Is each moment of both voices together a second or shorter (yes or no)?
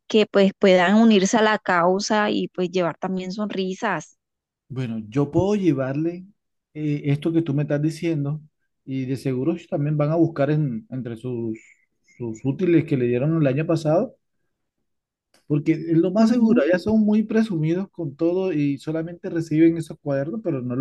yes